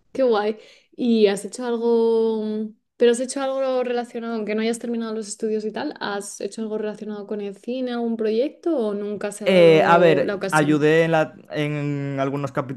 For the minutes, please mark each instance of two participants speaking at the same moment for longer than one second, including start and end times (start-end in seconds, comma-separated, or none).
9.4-10.9